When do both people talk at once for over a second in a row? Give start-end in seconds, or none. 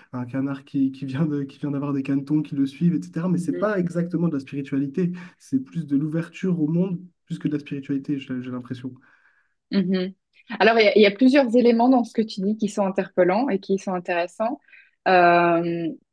none